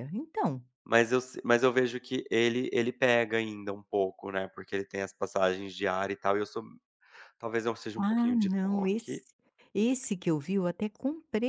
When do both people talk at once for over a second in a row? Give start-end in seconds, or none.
8.0-9.2